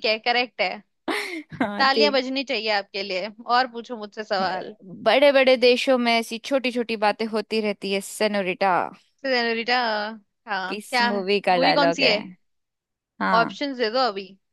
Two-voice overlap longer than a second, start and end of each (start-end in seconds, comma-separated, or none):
10.7-12.1